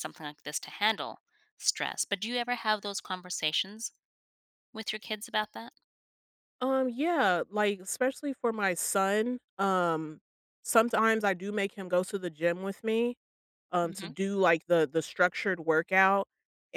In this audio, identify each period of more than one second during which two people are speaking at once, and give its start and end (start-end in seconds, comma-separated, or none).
none